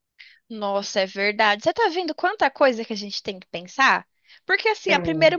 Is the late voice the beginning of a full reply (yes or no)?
no